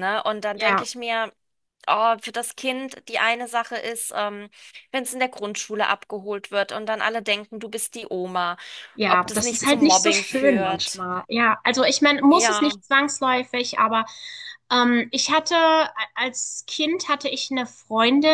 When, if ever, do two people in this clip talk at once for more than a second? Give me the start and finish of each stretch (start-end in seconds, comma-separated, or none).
9.1-11.0